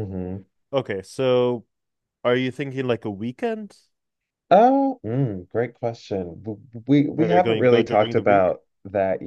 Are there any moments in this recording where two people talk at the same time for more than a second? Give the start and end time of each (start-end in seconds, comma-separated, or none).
7.2-8.5